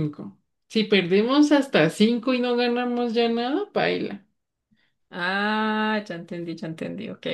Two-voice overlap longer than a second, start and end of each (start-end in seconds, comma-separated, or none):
none